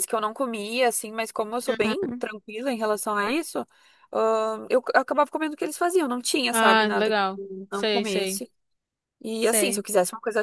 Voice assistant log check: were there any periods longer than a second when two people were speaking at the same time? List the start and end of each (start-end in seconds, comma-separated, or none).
6.5-8.4